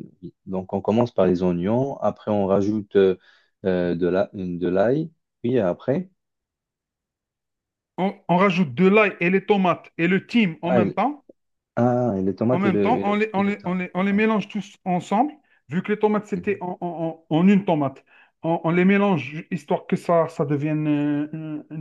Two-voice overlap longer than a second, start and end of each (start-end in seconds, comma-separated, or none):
12.5-14.3